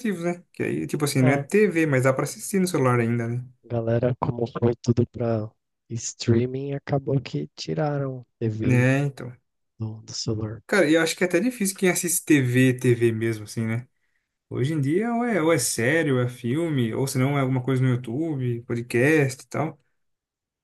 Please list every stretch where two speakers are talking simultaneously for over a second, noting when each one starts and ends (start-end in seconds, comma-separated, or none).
none